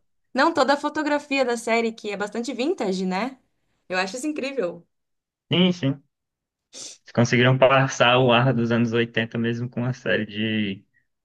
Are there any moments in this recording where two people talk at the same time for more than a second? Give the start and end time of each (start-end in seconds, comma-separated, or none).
none